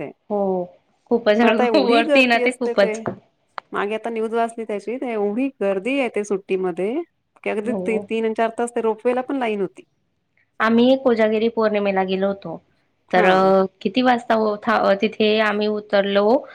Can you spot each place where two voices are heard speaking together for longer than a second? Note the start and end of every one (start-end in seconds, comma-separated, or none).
1.4-3.0